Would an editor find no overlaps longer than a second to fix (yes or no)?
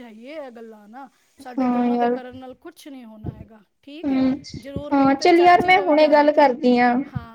no